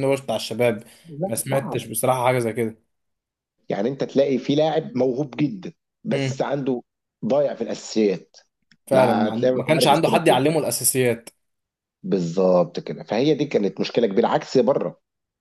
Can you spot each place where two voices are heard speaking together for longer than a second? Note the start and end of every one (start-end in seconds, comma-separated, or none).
8.9-10.4